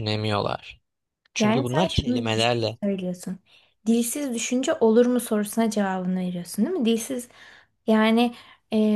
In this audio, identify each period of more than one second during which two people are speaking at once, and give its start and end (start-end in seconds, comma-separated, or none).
1.4-2.8